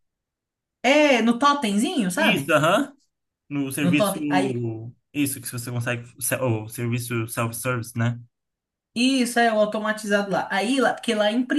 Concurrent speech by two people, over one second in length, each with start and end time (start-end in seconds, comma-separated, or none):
none